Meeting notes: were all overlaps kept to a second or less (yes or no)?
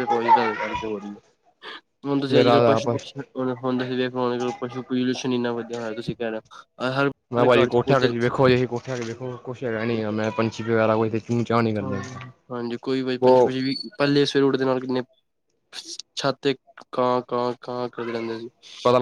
yes